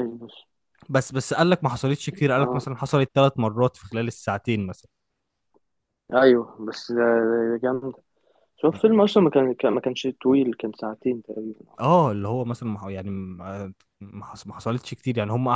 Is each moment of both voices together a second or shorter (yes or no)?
yes